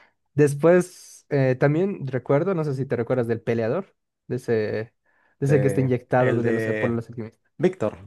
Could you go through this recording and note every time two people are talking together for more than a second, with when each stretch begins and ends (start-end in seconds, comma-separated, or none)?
5.5-7.0